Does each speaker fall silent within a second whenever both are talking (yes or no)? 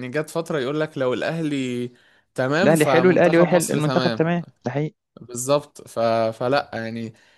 no